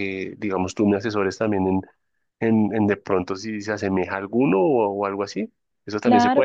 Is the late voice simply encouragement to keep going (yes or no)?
no